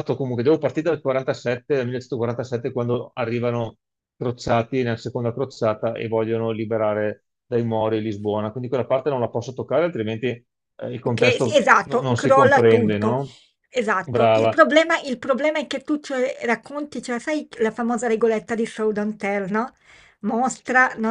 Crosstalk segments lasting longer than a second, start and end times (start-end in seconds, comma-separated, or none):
11.0-13.2